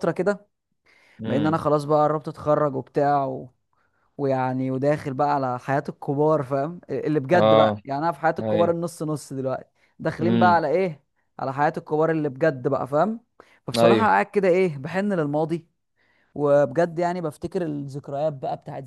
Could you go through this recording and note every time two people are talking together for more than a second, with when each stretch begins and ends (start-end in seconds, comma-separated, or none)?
none